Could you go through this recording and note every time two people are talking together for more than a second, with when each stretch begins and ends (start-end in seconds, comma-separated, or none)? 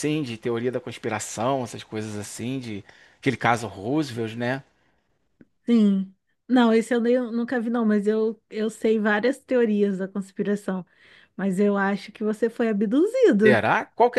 none